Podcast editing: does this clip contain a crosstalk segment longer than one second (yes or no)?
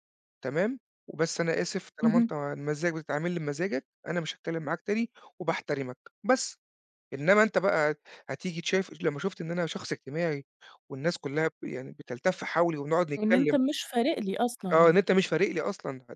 no